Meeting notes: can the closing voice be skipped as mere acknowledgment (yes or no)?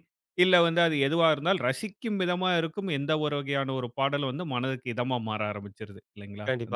no